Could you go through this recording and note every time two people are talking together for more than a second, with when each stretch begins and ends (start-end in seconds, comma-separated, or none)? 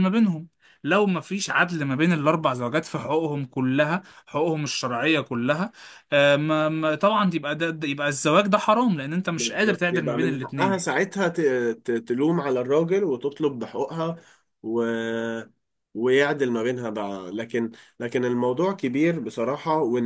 9.4-10.9